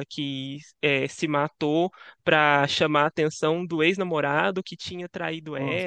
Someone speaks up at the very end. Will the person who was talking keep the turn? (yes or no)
yes